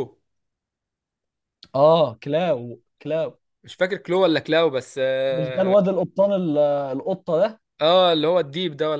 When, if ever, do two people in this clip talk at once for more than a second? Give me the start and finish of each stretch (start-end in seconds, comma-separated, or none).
none